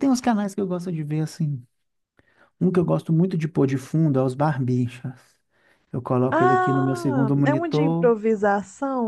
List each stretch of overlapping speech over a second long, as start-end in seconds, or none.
6.3-8.1